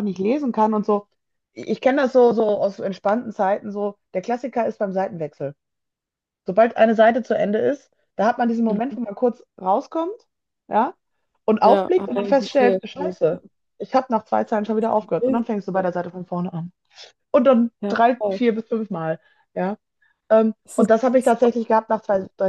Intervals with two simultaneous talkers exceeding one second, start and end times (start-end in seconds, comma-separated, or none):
11.6-13.1